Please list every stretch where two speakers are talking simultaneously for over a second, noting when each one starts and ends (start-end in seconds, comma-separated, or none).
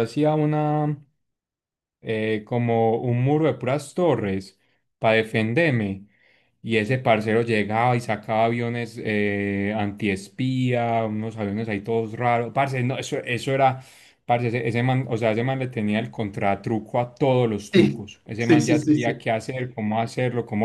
17.7-19.2